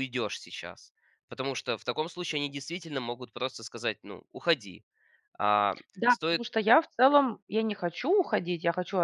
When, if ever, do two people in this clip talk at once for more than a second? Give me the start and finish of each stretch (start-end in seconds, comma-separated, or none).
none